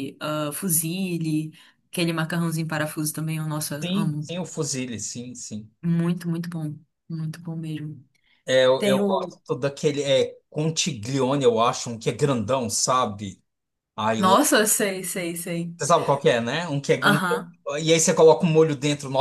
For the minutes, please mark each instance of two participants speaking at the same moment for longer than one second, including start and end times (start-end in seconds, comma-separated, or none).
none